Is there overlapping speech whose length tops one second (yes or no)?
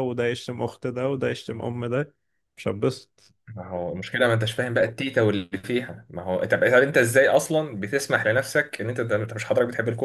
no